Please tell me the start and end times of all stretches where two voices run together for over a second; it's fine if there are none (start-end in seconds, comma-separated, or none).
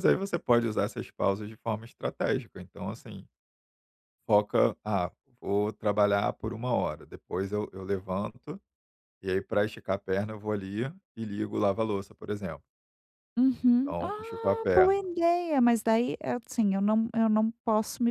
13.7-15.0